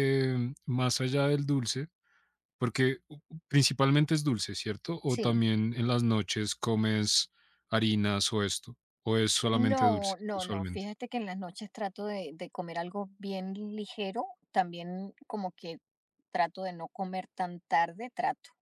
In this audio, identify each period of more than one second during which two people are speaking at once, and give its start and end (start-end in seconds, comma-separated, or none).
9.5-10.8